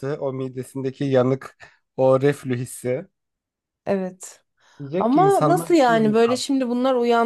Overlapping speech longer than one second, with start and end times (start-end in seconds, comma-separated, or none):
5.0-6.4